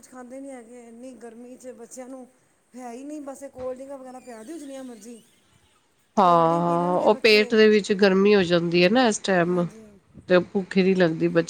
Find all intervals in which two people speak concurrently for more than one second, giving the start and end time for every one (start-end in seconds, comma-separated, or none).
6.2-7.6